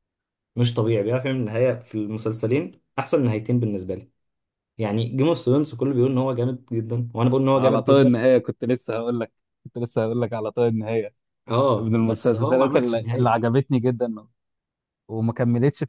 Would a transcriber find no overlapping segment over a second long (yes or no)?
no